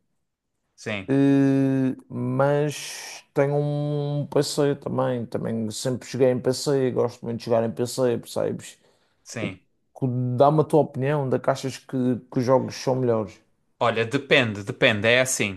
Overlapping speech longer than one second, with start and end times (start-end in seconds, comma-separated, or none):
none